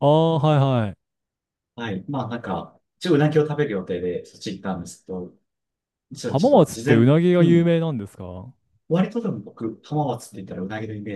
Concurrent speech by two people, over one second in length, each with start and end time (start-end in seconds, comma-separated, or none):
6.2-7.7